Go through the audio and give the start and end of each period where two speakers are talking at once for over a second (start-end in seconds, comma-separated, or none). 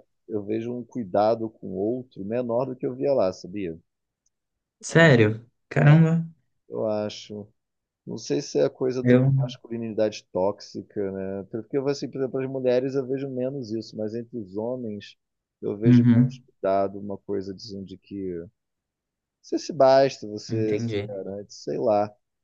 none